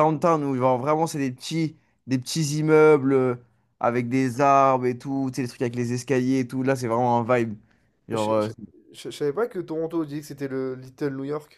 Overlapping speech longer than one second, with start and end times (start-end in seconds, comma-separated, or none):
none